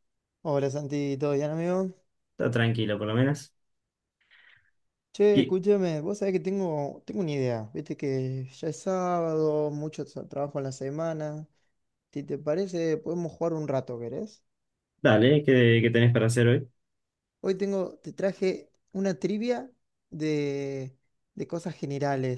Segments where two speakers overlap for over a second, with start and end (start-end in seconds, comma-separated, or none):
none